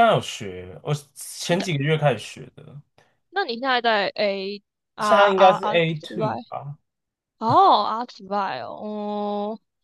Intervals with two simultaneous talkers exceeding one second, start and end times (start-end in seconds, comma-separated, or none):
5.0-6.3